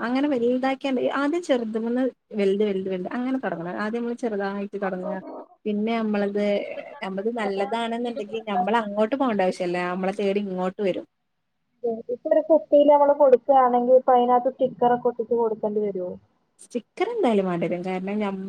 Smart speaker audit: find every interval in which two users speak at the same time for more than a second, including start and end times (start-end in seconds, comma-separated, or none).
7.0-8.6